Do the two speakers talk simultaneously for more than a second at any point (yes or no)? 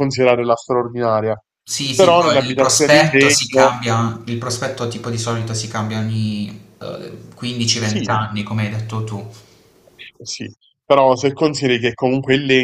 yes